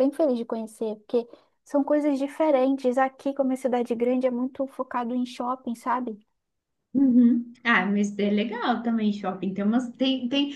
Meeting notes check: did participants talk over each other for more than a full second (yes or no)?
no